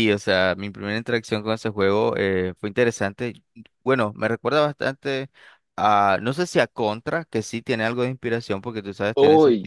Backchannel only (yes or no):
yes